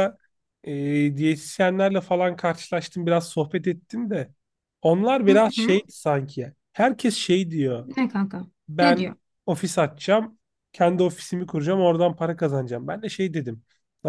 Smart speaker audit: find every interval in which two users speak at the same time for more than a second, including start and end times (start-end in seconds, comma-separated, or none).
none